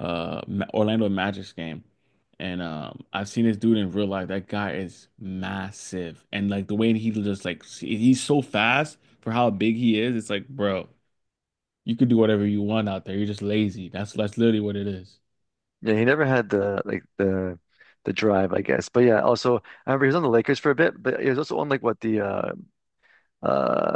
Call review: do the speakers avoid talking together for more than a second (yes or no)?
yes